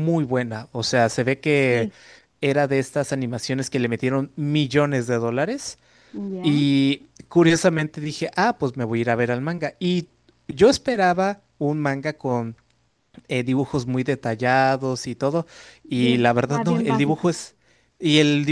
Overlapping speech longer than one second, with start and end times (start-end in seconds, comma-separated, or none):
15.9-17.4